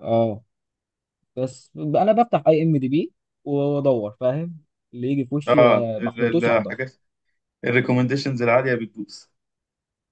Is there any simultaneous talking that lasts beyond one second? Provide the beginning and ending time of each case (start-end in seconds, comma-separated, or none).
5.5-6.7